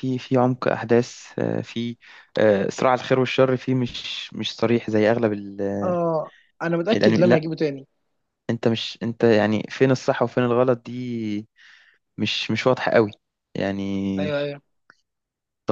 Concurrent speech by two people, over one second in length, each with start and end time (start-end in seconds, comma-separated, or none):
none